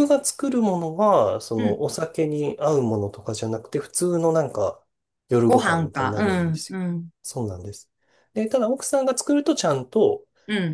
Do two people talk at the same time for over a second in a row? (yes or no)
yes